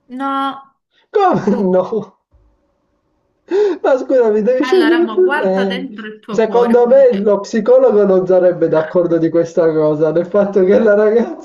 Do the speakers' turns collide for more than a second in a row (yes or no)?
yes